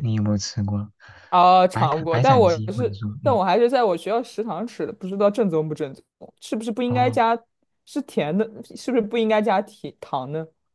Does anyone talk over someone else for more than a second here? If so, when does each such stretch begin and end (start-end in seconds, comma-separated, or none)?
1.7-3.4